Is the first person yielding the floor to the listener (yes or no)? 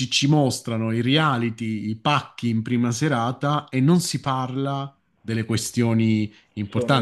no